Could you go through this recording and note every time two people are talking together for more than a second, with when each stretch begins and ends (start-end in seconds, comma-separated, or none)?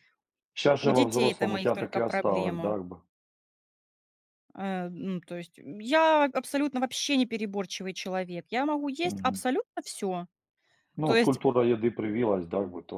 0.8-2.8